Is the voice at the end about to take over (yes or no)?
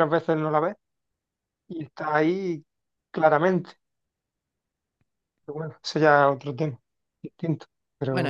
yes